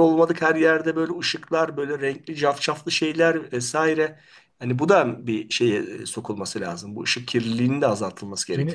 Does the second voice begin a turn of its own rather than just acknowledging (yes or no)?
yes